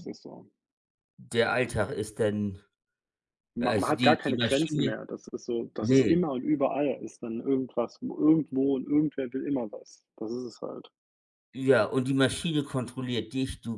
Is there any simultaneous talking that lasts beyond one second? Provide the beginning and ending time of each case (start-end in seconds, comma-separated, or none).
3.6-4.9